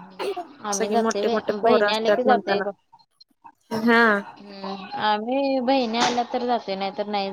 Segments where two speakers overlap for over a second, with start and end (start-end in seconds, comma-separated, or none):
0.7-2.6